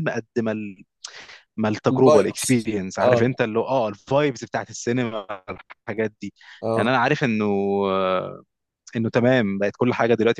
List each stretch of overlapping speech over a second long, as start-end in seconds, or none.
1.9-3.4